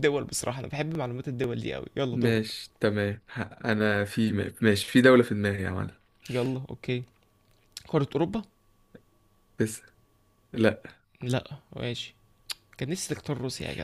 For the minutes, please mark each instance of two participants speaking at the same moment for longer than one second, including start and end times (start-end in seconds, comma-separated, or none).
none